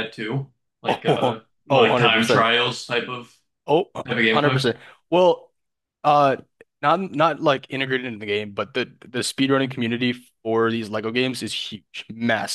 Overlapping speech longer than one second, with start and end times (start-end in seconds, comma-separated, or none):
0.9-2.5